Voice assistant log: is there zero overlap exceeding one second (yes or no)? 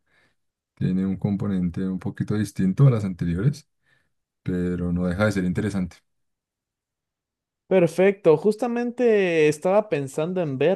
yes